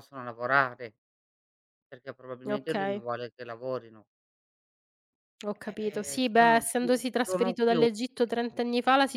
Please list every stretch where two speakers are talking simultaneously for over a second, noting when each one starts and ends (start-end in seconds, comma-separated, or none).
5.9-7.9